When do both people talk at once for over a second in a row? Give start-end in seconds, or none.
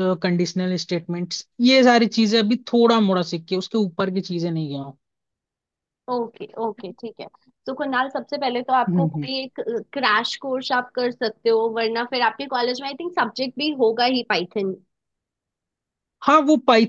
none